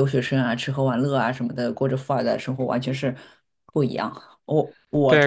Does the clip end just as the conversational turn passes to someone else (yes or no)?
yes